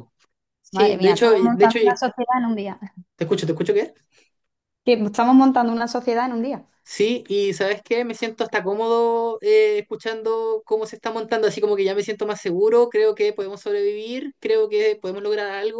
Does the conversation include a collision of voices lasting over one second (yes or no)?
yes